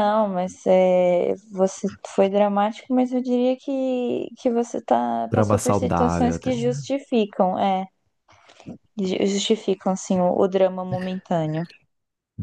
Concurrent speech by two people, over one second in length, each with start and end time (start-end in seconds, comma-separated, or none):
5.3-6.9